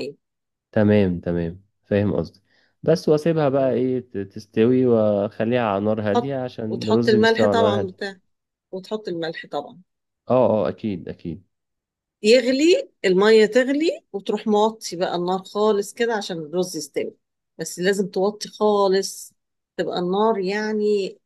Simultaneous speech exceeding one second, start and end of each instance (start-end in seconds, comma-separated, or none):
6.1-8.0